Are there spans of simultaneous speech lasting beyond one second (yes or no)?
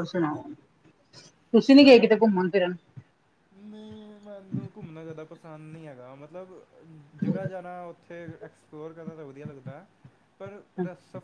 no